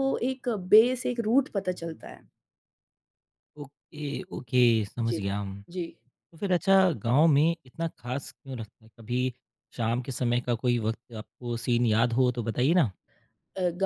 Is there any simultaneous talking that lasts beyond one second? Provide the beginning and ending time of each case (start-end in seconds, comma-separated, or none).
none